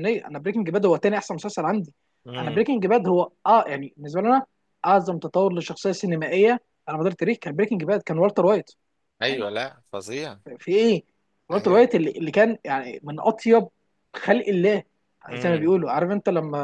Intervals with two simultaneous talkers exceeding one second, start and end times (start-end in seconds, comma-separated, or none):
none